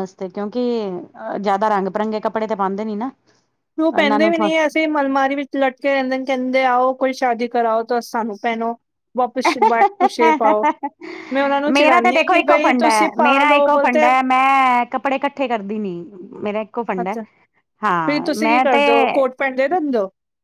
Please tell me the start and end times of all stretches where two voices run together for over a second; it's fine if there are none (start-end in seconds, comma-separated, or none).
11.8-14.1